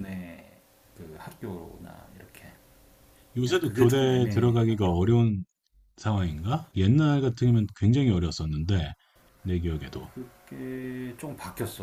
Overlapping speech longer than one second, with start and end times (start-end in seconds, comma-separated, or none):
3.4-4.9